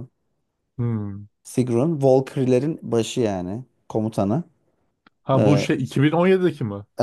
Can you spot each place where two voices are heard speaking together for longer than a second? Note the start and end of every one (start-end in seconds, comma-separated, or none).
none